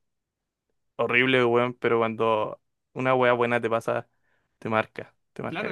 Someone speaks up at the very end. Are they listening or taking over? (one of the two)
taking over